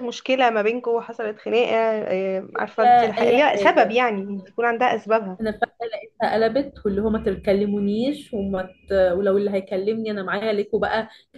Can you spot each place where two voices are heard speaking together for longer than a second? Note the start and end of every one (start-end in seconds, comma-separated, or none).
2.5-4.0